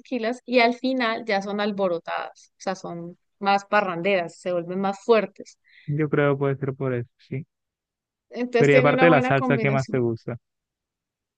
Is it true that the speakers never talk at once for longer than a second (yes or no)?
no